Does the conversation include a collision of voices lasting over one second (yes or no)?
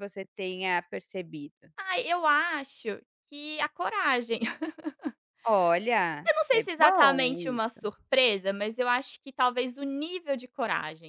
yes